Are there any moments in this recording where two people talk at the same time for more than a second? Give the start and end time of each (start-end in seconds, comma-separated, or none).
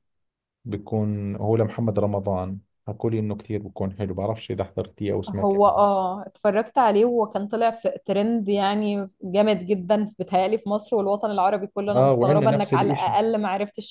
11.9-13.2